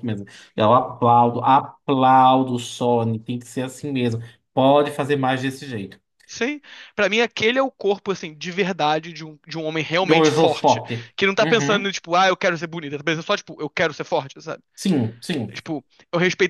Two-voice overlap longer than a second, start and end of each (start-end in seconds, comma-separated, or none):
10.0-11.9